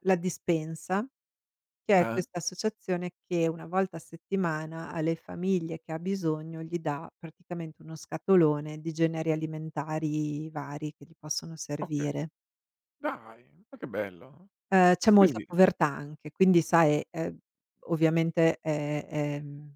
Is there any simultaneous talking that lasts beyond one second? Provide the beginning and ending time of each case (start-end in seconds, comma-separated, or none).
none